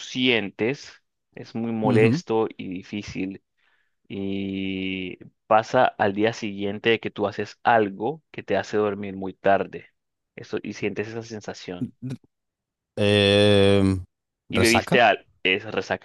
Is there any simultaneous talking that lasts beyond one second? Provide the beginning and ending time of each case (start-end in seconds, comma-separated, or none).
none